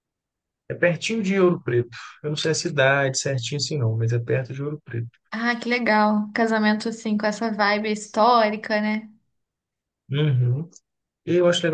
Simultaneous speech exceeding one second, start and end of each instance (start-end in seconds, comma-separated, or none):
none